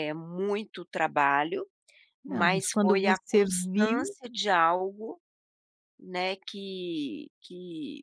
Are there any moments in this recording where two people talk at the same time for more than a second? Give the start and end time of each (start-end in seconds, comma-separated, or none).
2.3-4.2